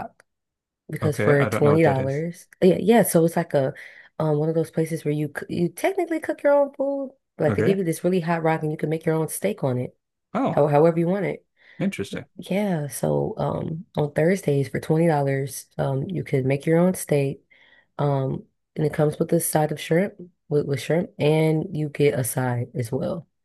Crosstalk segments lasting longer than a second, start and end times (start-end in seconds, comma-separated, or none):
1.0-2.2